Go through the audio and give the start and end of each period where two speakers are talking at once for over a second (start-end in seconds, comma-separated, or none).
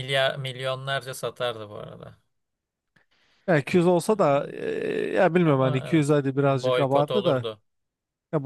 5.4-7.5